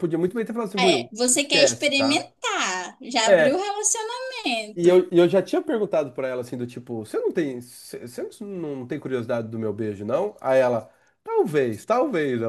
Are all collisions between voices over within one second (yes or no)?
no